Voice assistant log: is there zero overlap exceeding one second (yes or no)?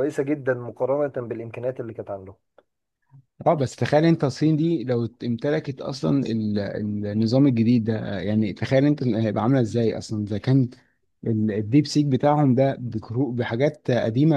yes